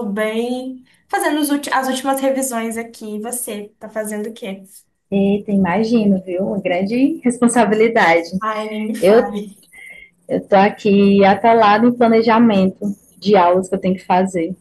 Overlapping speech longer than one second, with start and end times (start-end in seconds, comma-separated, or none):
none